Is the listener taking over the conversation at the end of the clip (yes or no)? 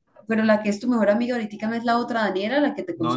yes